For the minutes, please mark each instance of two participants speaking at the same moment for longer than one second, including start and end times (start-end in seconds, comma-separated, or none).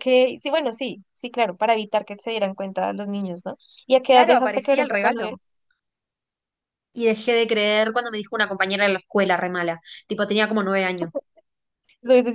4.1-5.4